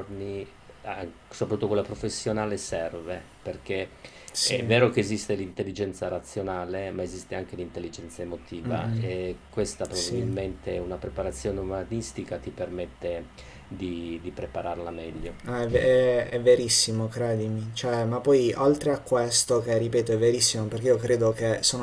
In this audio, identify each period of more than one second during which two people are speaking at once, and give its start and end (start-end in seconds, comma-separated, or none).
none